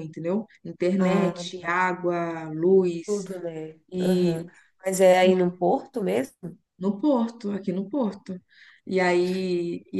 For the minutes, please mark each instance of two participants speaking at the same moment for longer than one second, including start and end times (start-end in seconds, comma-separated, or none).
none